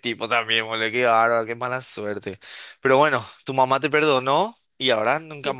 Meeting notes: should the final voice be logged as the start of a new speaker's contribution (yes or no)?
no